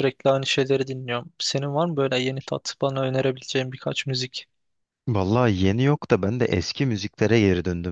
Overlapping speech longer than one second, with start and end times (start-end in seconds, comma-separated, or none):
none